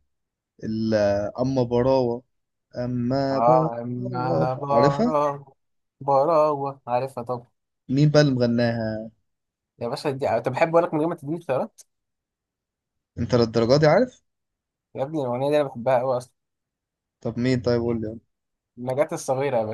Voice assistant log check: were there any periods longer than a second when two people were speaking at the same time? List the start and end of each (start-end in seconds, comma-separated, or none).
3.3-5.2